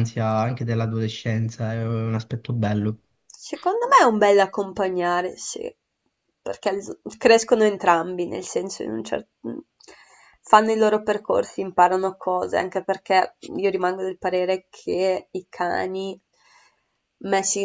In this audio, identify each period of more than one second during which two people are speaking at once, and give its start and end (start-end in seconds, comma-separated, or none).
none